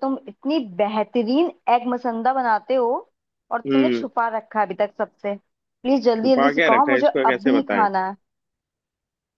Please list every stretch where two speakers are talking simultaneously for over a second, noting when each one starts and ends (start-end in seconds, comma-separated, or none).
6.2-7.9